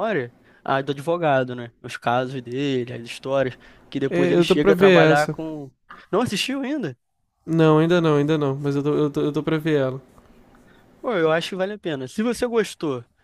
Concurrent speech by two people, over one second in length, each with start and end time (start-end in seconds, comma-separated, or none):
4.1-5.3